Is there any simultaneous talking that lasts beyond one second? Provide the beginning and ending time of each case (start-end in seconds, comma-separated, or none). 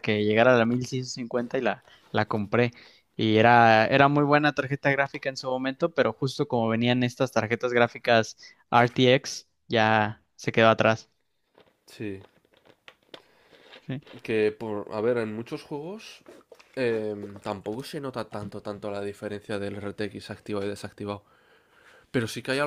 none